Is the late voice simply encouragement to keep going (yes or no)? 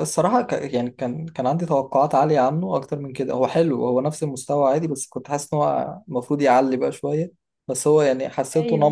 yes